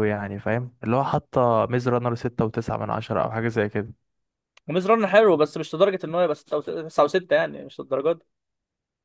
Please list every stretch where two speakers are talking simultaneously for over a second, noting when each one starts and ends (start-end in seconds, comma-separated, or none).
none